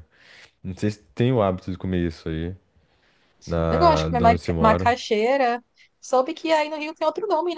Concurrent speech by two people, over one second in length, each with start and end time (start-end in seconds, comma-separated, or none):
3.7-5.0